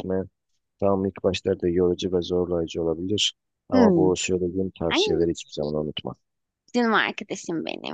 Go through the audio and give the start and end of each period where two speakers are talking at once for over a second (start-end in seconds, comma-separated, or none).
none